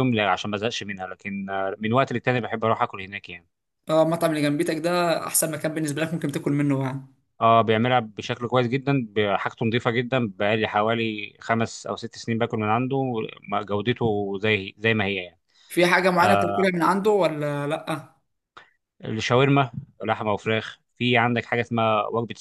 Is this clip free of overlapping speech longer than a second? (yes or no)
yes